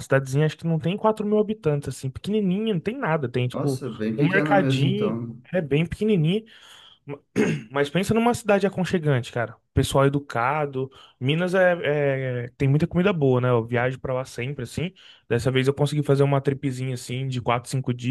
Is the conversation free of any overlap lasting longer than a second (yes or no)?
no